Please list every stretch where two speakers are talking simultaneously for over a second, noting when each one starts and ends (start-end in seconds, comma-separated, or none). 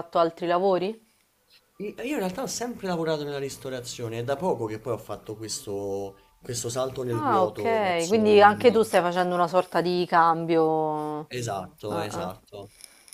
7.1-8.9